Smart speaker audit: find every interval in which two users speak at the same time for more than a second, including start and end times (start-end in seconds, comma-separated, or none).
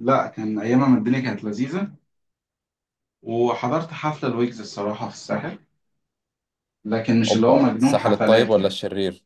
7.3-8.8